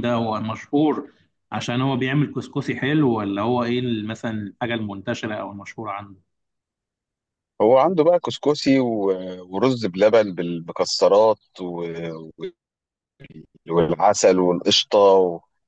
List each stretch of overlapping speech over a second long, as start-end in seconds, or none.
none